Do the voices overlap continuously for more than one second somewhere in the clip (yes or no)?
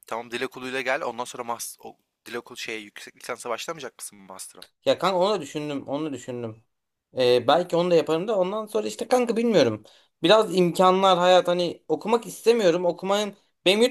no